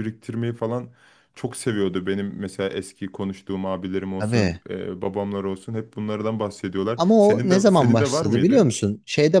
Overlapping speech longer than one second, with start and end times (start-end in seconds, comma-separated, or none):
7.0-8.7